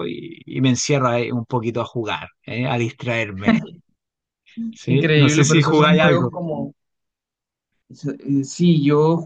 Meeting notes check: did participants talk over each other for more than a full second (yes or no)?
yes